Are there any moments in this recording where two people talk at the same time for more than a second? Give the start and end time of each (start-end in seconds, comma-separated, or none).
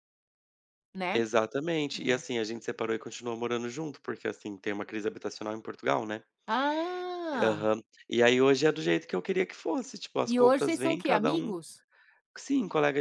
10.2-11.6